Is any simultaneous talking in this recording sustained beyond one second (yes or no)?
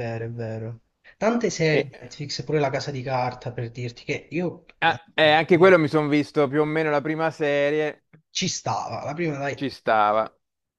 no